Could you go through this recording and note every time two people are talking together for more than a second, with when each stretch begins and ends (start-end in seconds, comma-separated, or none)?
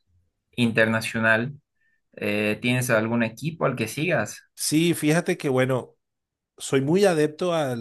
none